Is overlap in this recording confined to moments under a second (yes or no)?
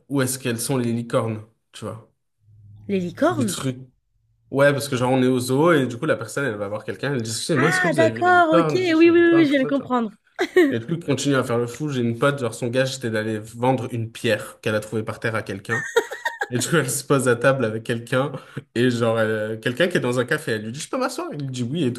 no